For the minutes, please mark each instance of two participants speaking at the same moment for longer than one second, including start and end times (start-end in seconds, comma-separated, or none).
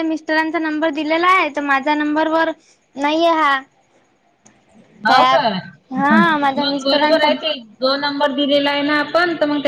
5.1-7.3